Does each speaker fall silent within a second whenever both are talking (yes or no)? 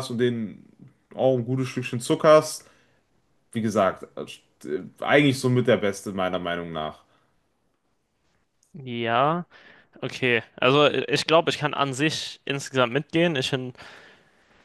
yes